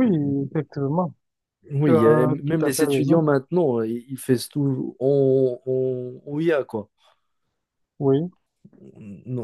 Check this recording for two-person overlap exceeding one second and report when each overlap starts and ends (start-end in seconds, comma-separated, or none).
1.8-3.2